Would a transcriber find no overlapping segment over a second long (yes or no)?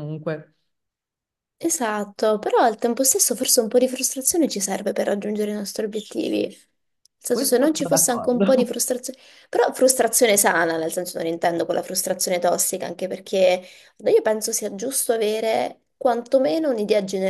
no